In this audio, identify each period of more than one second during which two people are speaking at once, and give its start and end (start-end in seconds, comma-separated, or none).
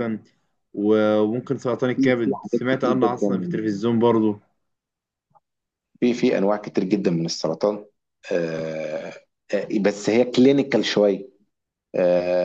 1.9-3.4